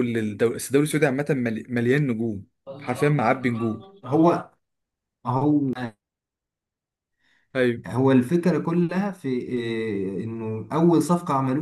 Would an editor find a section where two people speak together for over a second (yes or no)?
no